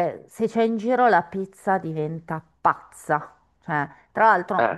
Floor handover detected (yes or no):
no